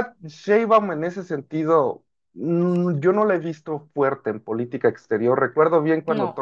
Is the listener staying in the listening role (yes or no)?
yes